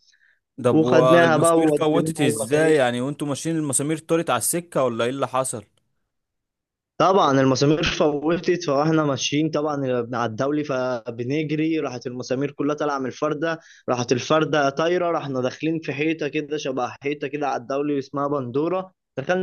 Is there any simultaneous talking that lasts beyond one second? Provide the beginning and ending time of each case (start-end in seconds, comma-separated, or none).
0.7-2.8